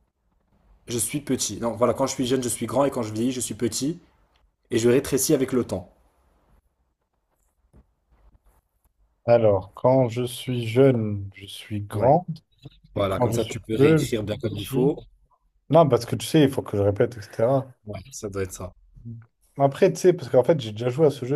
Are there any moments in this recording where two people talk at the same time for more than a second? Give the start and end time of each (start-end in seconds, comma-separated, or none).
12.9-14.9